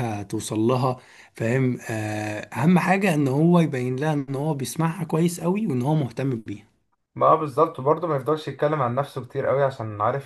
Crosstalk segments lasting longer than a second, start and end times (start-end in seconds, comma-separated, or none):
none